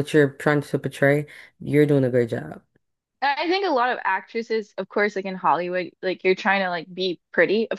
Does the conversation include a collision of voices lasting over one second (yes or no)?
no